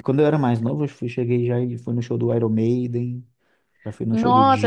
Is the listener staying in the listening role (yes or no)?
no